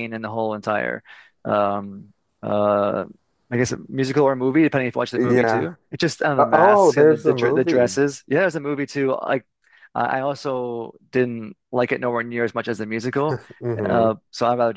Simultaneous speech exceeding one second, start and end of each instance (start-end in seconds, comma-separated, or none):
6.4-8.0